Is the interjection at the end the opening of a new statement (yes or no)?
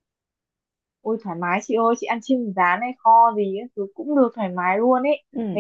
no